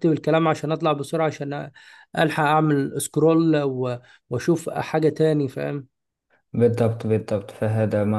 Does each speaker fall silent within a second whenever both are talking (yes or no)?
yes